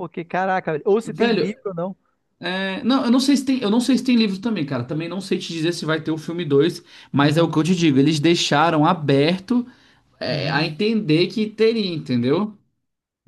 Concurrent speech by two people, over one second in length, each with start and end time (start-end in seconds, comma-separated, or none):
none